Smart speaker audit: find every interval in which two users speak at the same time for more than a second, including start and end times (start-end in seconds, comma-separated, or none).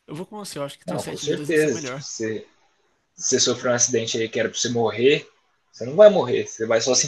0.8-2.1